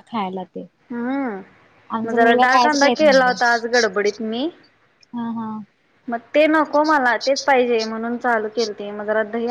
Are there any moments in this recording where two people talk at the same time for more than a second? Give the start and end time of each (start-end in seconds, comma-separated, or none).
2.0-3.3